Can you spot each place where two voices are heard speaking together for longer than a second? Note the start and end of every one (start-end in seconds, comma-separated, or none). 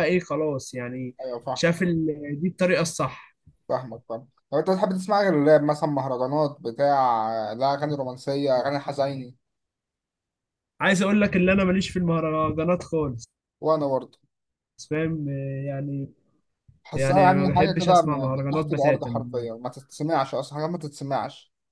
16.9-19.2